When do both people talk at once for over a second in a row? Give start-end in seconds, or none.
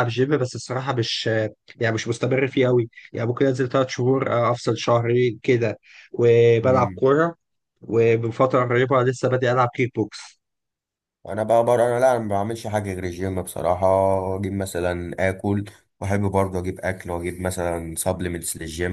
none